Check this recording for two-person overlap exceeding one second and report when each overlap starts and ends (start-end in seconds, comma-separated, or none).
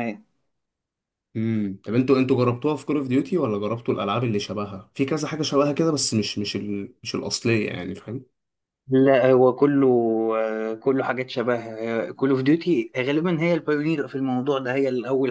none